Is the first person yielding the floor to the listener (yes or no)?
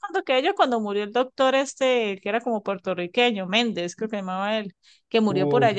no